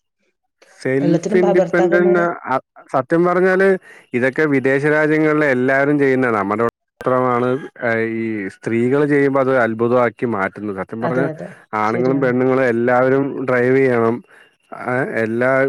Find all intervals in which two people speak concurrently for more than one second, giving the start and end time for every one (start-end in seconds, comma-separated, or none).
1.0-2.2